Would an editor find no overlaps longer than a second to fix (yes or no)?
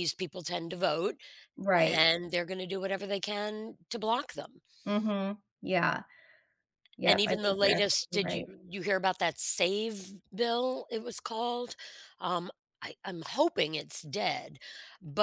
no